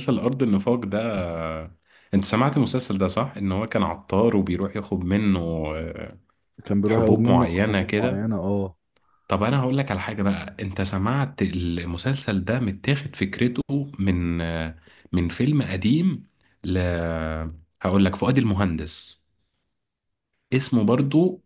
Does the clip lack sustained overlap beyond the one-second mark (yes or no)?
no